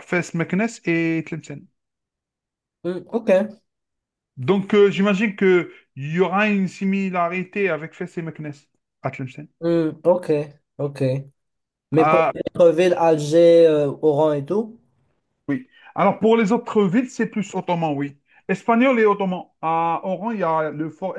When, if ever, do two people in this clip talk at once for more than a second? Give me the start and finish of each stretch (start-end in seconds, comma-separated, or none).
none